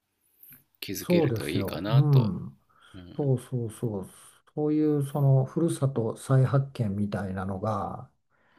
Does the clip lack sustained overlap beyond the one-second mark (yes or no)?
no